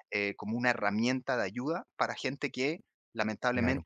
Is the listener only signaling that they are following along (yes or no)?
yes